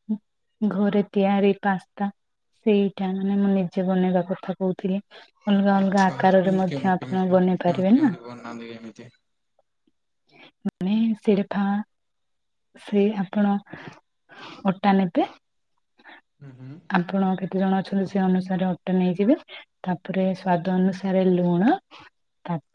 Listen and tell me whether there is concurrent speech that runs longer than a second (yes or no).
yes